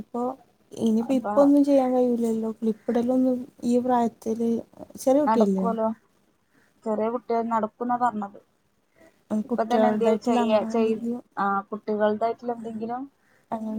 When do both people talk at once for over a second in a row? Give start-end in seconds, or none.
9.5-11.0